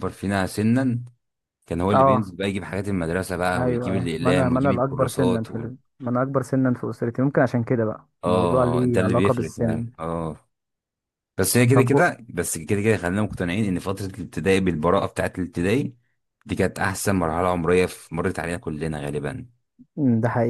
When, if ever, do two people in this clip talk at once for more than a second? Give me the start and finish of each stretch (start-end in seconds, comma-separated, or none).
3.6-5.7, 8.2-9.9